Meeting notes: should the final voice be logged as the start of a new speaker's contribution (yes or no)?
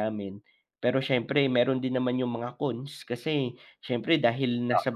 no